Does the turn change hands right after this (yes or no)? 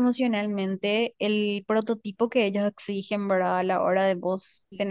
no